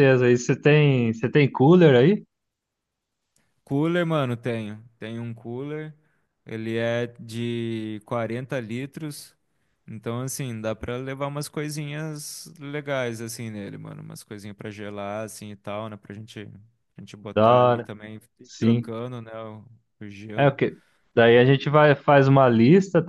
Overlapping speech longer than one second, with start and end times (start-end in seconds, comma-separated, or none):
none